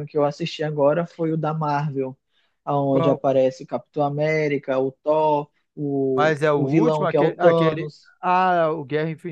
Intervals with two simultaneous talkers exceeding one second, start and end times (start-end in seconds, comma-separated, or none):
6.2-8.1